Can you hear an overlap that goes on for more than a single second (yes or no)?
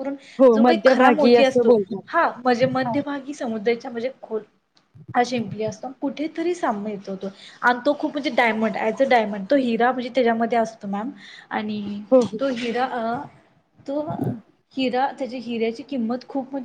yes